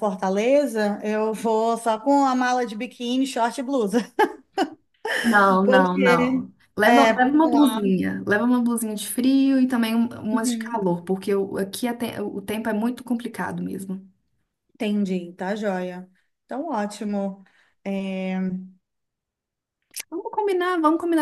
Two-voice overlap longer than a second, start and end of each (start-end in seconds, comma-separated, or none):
5.6-7.8